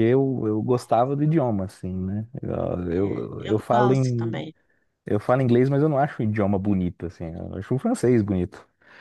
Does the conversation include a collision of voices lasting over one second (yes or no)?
yes